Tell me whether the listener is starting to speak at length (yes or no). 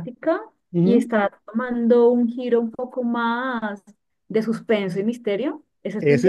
yes